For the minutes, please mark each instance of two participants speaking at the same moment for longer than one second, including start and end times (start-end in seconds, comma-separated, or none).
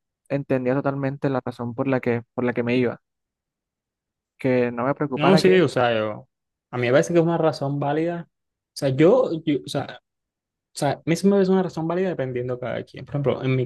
none